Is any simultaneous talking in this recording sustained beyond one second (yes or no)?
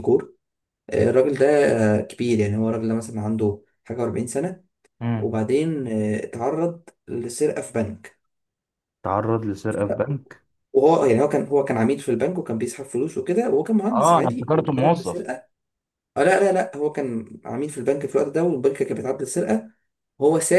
yes